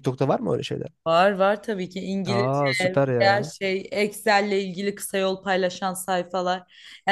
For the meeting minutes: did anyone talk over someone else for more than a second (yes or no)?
yes